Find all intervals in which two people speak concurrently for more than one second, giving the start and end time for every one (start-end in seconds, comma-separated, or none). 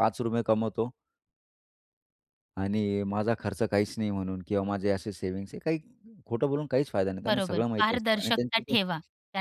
7.2-8.8